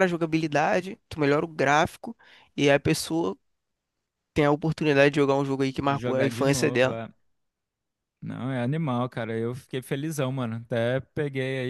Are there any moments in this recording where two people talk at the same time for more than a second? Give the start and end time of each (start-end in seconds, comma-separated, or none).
5.8-7.0